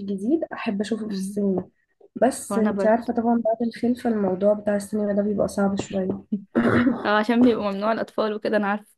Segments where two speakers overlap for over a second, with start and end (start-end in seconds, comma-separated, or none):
none